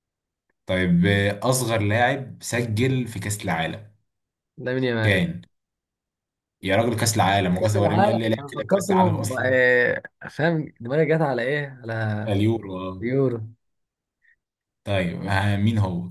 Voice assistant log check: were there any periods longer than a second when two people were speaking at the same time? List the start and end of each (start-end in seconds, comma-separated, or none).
7.6-9.6